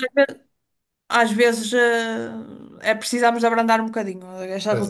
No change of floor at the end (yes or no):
yes